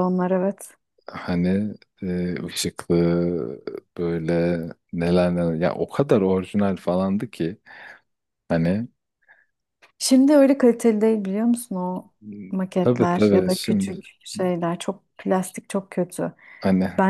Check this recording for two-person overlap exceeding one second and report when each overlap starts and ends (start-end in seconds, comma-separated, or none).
12.5-14.0